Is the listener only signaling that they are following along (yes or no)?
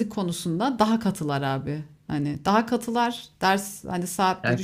yes